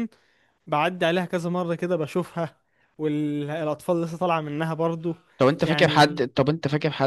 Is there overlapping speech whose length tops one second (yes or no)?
no